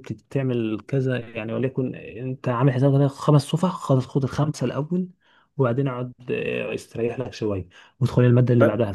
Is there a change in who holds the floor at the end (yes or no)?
no